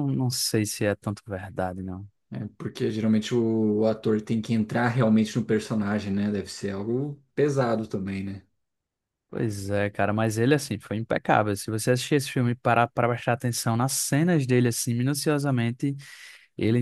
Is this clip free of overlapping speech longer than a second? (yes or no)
yes